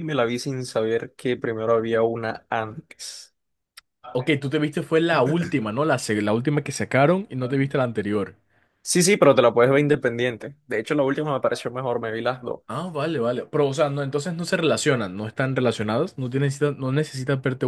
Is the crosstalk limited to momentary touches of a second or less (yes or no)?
yes